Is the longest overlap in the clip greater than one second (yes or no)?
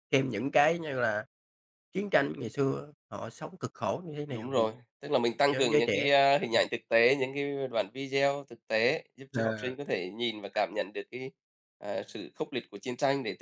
no